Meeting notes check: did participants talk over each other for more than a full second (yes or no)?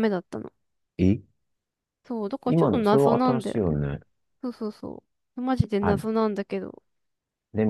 yes